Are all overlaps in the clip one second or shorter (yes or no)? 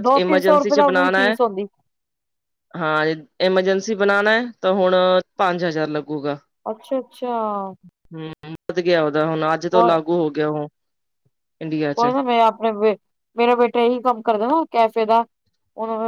yes